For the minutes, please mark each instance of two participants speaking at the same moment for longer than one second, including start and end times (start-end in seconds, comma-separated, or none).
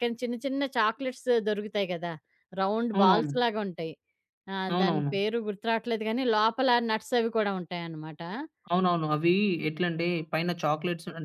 none